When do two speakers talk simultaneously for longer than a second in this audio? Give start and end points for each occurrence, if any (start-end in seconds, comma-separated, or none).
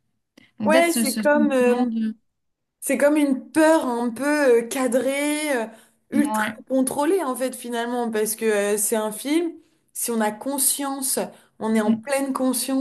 0.6-1.9